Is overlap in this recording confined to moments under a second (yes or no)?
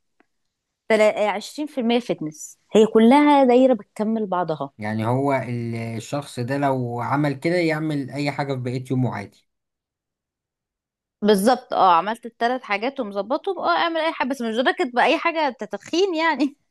yes